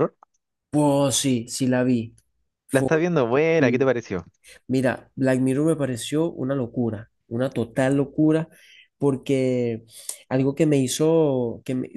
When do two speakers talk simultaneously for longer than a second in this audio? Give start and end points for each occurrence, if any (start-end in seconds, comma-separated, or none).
none